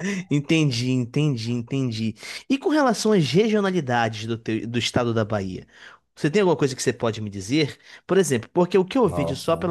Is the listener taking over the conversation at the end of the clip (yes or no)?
no